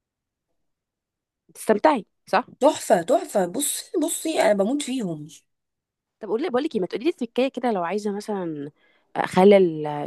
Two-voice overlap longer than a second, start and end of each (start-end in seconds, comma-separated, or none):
none